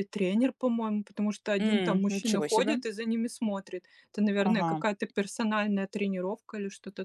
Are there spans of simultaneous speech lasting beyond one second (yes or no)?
yes